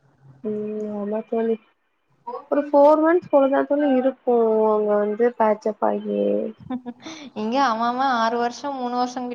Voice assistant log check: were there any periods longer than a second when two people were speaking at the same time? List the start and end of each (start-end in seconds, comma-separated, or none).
none